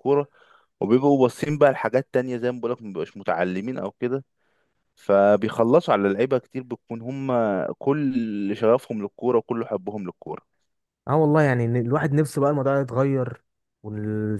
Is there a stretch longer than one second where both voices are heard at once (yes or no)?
no